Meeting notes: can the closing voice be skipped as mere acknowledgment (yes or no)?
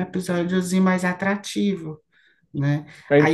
yes